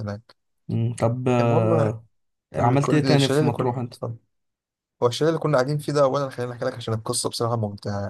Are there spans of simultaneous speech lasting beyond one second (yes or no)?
yes